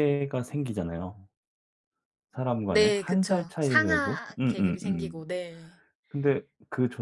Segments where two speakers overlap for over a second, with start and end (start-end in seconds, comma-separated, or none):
2.7-5.2